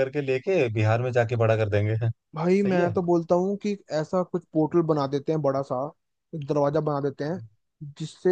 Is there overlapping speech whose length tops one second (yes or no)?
no